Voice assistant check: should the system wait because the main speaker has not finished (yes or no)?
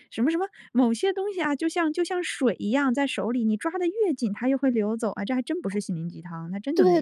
no